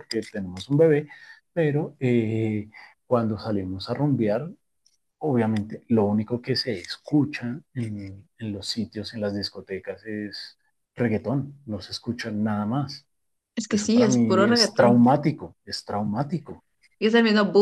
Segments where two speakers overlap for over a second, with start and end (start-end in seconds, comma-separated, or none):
13.7-15.0